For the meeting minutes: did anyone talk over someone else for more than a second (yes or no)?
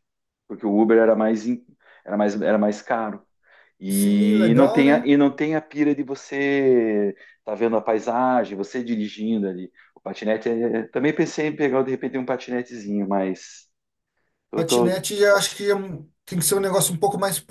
yes